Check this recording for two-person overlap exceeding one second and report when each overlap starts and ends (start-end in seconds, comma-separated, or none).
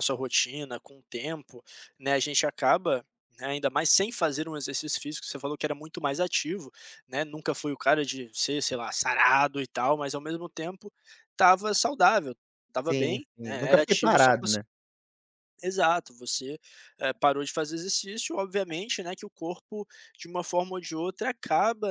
12.8-14.6